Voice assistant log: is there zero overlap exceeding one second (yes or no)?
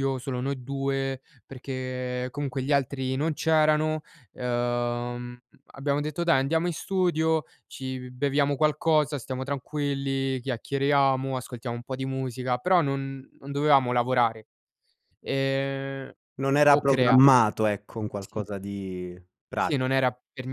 yes